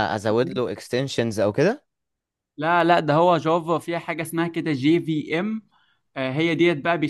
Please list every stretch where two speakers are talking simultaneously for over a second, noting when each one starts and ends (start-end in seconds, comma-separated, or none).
none